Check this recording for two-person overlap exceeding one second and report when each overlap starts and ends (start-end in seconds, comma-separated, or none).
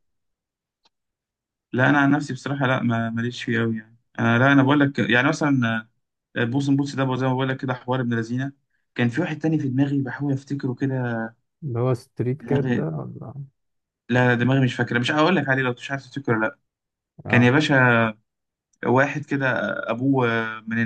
none